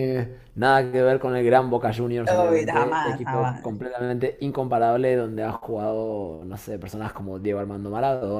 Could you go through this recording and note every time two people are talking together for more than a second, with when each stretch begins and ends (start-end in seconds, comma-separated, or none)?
2.3-3.8